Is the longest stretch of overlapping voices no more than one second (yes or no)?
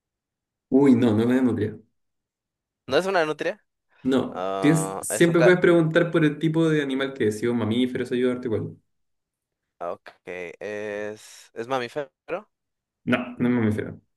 no